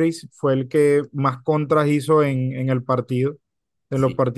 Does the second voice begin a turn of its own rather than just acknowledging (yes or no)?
no